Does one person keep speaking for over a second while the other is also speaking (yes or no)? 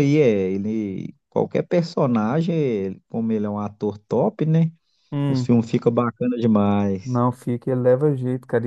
no